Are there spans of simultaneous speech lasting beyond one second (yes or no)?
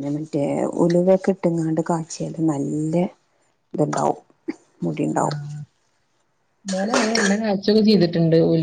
no